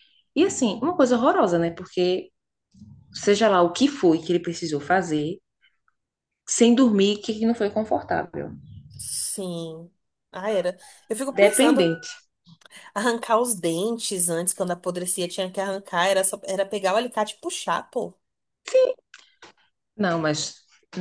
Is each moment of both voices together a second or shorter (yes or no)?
yes